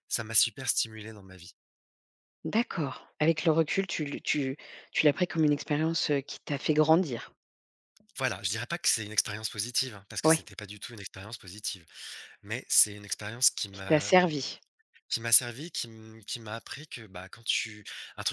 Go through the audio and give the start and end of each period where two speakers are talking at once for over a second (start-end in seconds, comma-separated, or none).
none